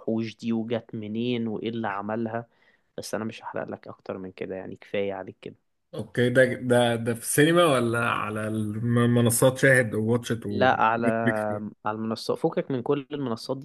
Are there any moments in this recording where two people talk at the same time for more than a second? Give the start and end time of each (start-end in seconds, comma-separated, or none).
none